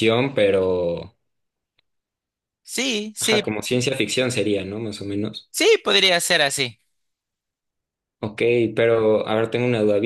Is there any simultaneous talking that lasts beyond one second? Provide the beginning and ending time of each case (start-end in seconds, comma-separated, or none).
none